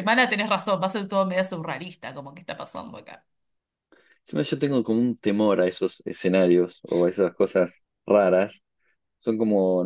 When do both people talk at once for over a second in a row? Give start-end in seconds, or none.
none